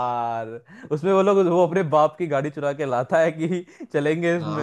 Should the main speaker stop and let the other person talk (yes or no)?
yes